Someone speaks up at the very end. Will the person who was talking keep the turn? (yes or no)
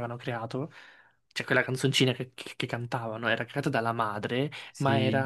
yes